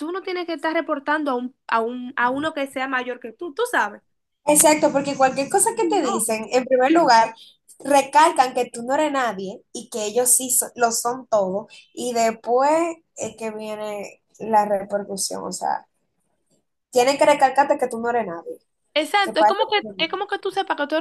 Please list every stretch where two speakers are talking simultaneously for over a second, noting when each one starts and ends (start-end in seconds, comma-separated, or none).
none